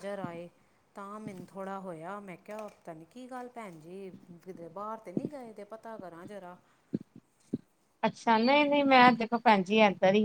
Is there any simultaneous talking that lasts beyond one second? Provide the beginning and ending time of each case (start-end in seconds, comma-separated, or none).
none